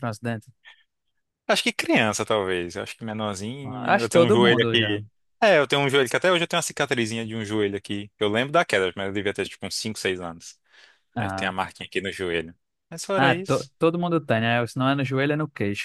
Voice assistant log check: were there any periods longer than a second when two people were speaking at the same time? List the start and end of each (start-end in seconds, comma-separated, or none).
3.6-5.0